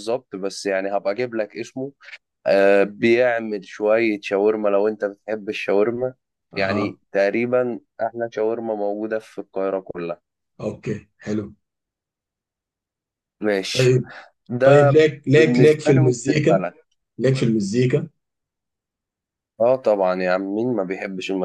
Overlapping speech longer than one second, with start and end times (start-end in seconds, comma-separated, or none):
14.6-16.6